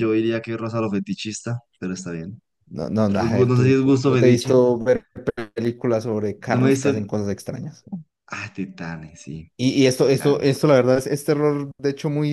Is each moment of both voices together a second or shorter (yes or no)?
no